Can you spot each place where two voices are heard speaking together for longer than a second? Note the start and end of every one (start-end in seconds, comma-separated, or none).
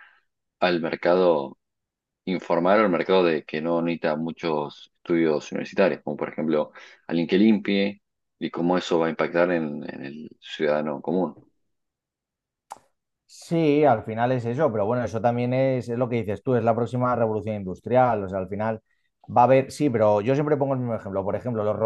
none